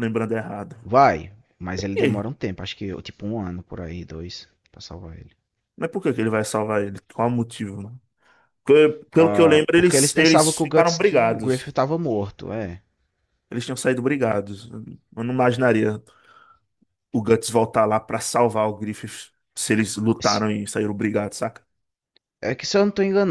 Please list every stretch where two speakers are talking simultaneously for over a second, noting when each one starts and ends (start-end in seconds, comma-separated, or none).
9.2-11.7